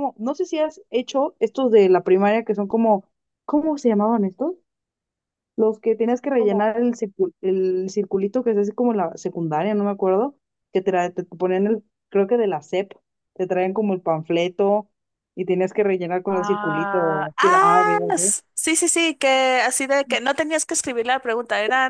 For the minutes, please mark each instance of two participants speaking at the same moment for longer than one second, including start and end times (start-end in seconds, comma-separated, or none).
16.3-18.3